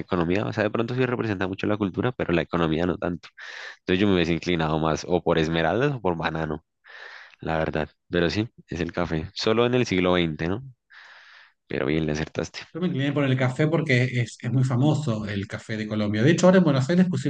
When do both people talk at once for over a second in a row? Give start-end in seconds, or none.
none